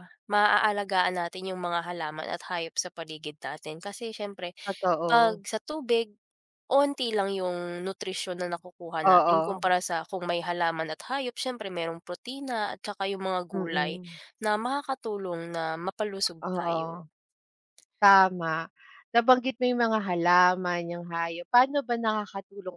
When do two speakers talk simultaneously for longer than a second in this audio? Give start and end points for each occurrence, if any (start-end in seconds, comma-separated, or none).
none